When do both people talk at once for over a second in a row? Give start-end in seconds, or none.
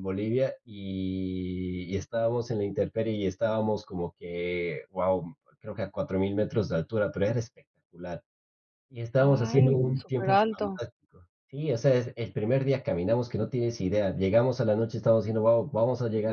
9.2-10.8